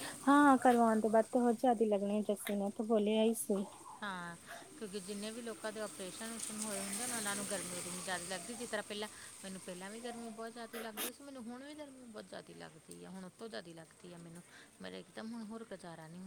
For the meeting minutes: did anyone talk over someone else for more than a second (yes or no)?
no